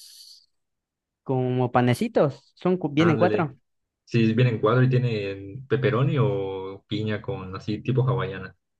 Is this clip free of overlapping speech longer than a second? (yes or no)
yes